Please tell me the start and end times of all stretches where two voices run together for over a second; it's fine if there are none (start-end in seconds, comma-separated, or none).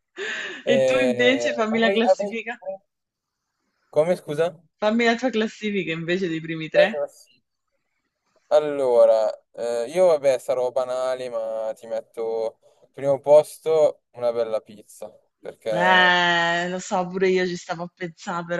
0.7-2.6